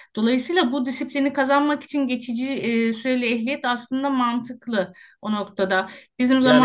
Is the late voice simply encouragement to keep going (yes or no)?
no